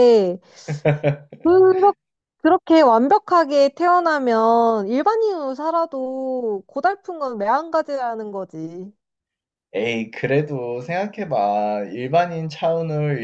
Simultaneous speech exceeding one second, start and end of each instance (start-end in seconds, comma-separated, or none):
none